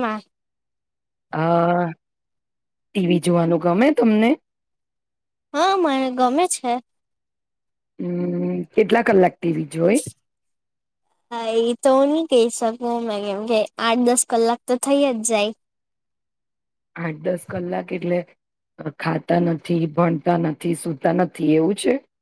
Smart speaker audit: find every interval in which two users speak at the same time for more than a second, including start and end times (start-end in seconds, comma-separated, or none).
none